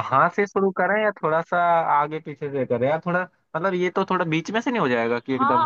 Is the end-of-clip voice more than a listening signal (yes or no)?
yes